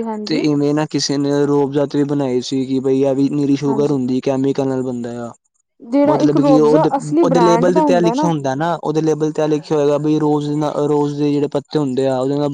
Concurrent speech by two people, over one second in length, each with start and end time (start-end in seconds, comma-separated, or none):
6.0-7.8